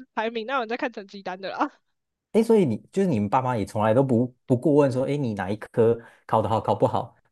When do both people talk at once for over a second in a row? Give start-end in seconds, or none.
none